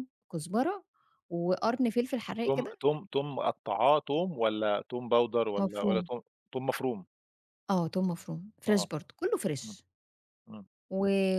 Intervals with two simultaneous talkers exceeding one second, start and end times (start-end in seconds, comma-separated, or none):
none